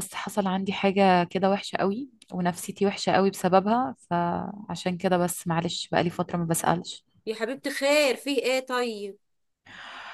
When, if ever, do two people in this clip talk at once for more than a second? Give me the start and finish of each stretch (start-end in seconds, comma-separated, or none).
none